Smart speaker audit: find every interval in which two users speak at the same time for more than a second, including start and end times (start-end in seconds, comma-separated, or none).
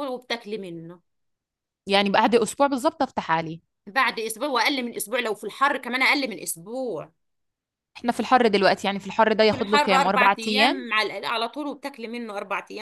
9.5-10.9